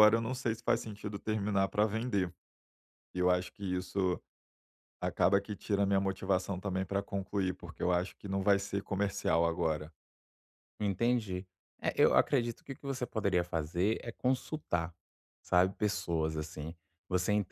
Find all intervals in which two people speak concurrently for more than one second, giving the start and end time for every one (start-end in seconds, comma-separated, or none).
none